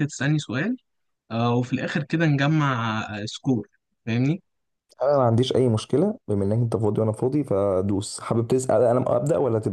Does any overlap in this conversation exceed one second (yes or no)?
no